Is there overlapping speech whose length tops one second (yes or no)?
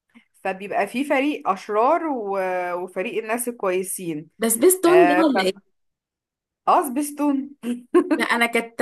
no